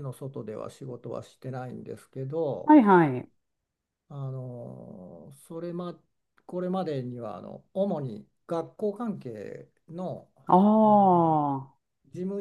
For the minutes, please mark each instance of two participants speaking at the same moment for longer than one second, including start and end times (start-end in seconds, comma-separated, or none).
none